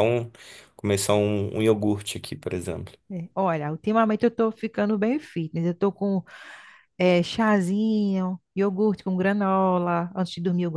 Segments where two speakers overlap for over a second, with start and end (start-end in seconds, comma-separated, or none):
none